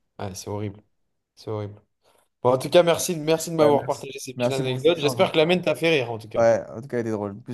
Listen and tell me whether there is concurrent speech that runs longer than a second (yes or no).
yes